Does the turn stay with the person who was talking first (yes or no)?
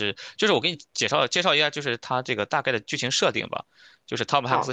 no